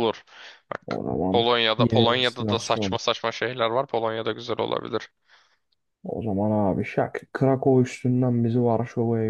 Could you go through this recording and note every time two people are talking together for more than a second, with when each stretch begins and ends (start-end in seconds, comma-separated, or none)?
0.9-3.0